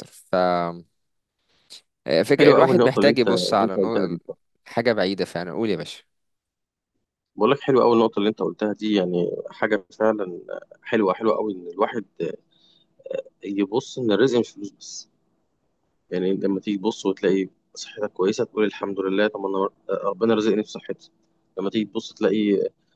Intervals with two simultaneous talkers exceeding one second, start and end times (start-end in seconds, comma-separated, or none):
2.4-4.2